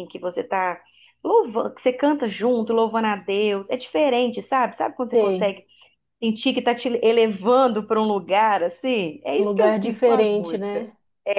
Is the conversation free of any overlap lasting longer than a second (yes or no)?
no